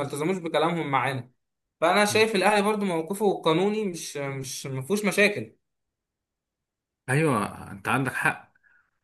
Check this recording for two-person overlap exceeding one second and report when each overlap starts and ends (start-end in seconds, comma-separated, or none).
none